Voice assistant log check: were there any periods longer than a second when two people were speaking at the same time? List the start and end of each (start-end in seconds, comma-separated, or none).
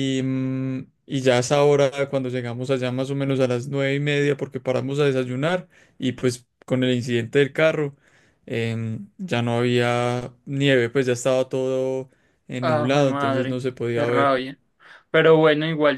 12.6-14.4